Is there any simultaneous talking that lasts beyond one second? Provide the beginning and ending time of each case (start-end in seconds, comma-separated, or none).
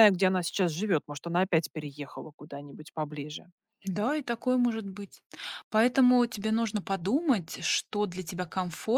none